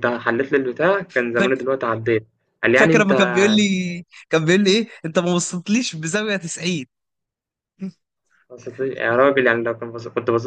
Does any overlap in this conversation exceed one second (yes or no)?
no